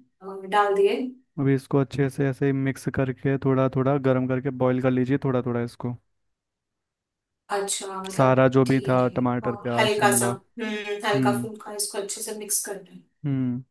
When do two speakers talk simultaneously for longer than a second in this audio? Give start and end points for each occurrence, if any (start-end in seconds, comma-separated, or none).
8.1-10.3